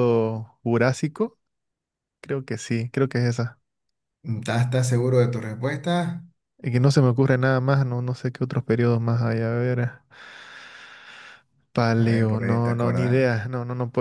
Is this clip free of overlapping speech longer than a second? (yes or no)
no